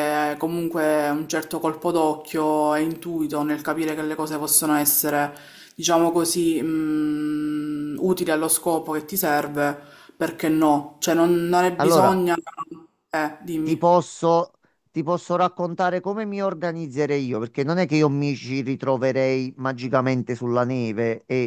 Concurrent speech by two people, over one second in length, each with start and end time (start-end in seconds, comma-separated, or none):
none